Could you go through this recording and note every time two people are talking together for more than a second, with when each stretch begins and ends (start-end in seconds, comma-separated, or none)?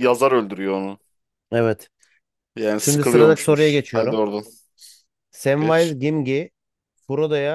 2.8-4.2